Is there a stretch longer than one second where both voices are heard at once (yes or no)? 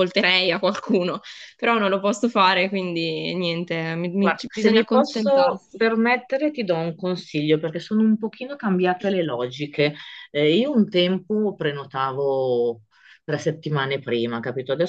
yes